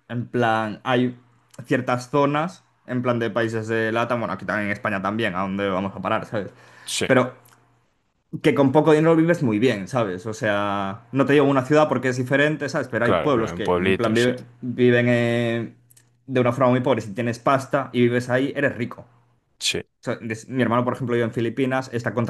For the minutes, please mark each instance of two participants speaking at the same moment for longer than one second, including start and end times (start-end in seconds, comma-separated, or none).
13.0-14.3